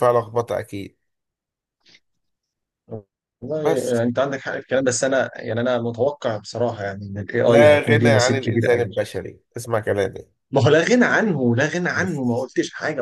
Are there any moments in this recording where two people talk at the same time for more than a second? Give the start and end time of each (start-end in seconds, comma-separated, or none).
7.5-8.9